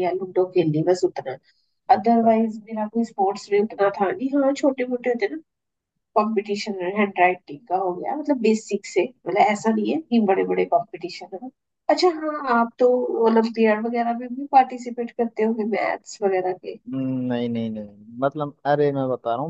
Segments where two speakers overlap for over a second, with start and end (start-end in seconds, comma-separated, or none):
none